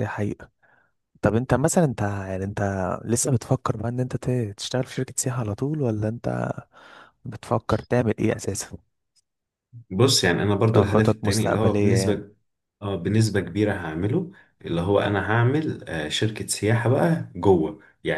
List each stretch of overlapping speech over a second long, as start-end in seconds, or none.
10.8-12.2